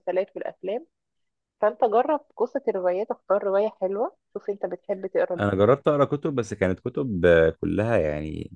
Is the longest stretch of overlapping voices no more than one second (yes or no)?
yes